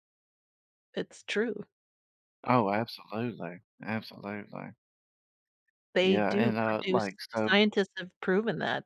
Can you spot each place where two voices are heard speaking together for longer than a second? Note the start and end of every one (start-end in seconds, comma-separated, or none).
6.0-7.6